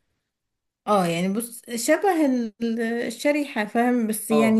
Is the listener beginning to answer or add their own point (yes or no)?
yes